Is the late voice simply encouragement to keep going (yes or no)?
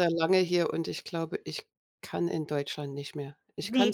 no